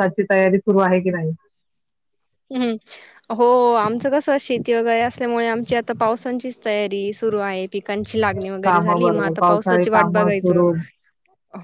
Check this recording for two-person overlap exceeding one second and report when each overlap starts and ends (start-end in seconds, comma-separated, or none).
8.6-10.6